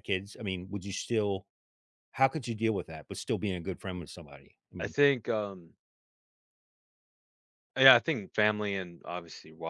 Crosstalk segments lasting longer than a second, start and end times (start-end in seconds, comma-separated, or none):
none